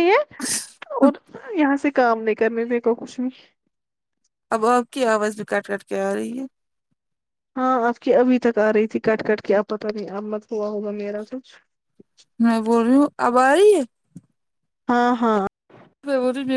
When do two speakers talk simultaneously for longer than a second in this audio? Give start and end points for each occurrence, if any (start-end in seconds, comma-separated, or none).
none